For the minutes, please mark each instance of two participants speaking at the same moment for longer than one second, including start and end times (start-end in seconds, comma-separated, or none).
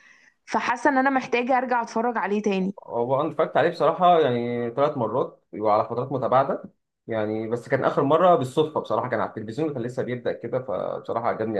none